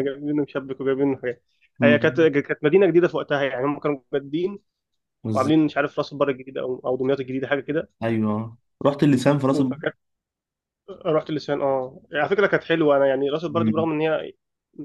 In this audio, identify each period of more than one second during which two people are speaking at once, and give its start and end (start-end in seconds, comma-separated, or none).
none